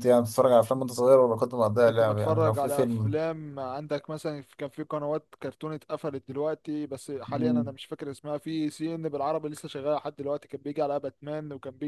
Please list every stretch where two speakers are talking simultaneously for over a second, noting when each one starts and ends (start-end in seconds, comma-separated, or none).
1.9-3.1